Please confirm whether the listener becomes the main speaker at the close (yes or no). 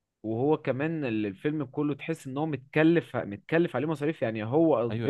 yes